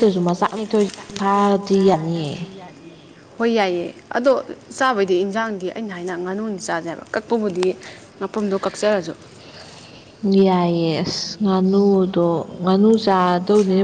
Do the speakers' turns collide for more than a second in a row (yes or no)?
no